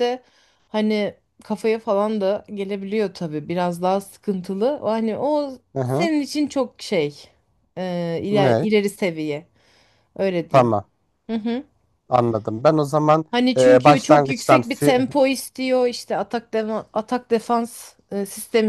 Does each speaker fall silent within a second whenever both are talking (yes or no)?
no